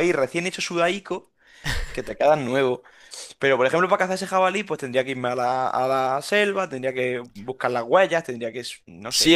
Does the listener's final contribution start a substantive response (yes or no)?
yes